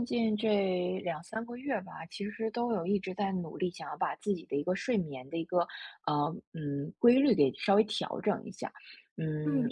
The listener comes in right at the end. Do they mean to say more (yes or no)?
no